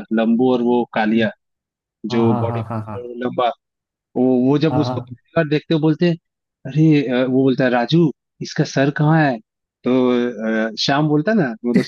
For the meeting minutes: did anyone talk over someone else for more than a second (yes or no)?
no